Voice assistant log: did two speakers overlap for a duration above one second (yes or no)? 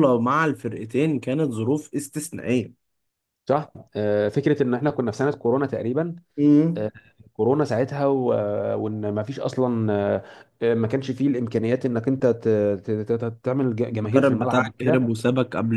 yes